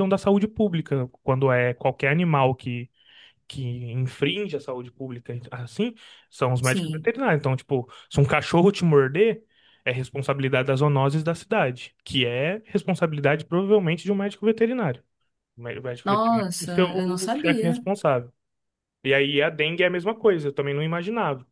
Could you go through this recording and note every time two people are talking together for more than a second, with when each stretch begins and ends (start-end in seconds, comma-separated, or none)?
16.0-17.8